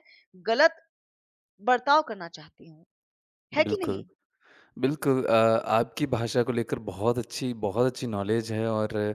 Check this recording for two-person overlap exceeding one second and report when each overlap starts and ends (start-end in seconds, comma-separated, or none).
none